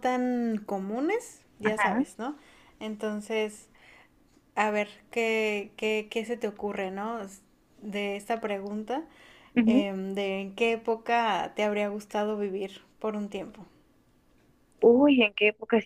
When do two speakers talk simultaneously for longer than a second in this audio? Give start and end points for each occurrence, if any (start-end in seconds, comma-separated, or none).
none